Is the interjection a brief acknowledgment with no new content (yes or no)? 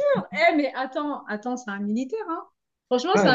yes